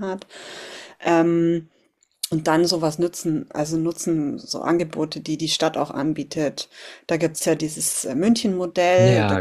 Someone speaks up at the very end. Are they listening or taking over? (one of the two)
listening